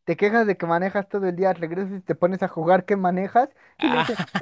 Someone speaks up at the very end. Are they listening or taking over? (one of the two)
listening